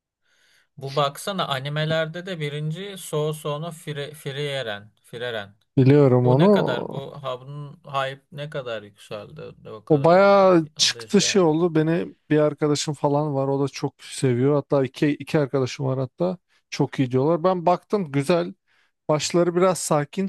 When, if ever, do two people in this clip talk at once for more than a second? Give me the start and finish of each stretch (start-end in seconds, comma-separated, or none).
9.9-11.7